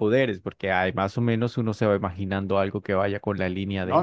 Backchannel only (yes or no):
no